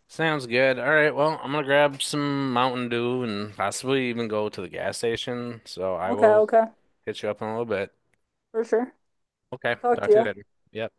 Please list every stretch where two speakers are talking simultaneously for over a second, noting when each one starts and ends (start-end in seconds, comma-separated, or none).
none